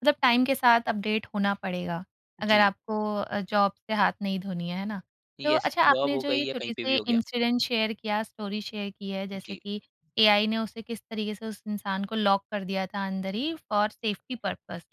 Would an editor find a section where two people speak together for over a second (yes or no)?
yes